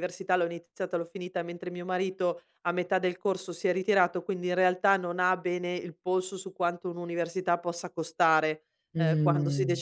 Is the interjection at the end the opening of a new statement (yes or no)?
no